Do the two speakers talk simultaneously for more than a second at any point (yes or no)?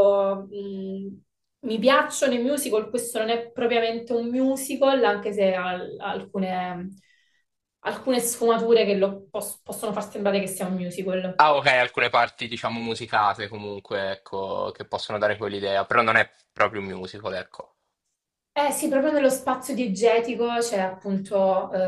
no